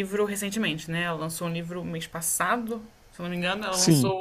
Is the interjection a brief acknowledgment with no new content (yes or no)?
yes